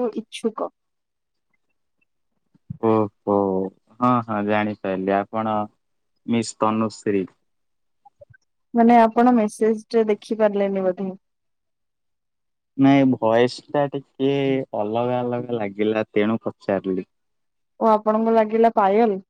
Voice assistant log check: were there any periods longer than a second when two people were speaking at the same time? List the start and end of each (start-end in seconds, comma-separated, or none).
none